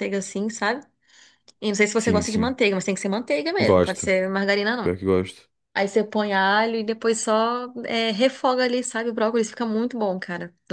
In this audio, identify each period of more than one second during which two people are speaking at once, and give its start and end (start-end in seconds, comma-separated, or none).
none